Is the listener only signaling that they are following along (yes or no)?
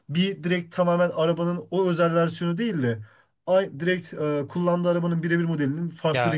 no